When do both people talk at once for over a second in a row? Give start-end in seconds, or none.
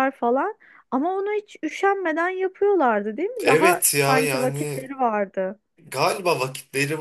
3.4-4.9